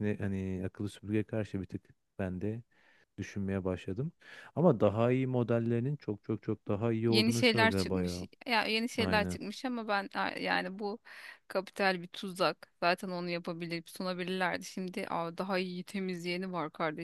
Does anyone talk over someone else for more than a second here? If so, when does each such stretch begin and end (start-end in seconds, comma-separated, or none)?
7.1-8.3